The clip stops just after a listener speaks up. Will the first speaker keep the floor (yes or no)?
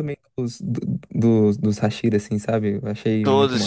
no